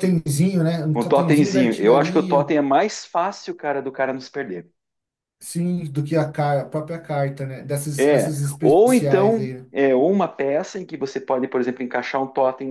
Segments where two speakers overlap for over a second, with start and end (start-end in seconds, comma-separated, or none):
0.9-2.5, 8.0-9.7